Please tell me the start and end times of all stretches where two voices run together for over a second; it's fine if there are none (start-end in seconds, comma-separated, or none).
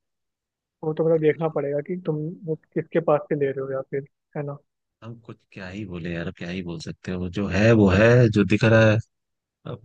none